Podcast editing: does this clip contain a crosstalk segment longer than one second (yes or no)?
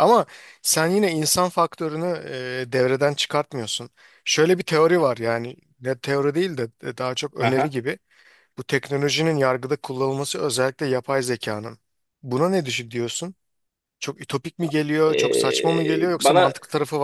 yes